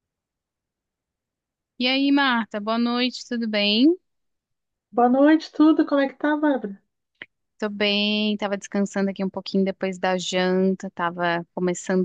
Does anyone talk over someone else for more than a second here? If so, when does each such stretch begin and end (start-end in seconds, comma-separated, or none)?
none